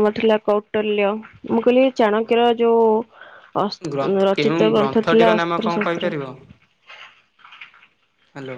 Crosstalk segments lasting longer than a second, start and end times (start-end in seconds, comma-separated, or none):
3.9-6.1